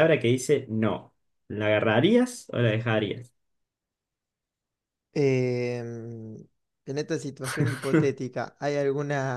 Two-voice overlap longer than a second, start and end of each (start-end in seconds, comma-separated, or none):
none